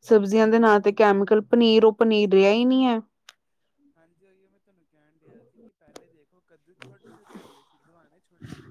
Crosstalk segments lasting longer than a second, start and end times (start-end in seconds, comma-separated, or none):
none